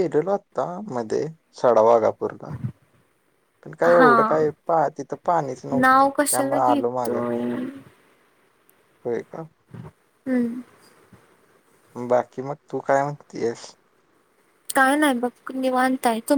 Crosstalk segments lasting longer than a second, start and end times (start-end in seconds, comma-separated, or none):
5.8-7.2